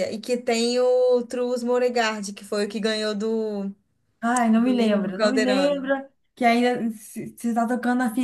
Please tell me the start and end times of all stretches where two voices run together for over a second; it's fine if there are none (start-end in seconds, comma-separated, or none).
4.5-5.9